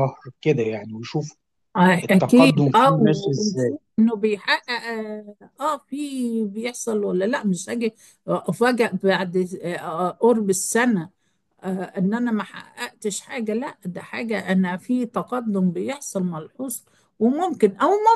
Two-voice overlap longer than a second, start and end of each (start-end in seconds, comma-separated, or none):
2.0-3.7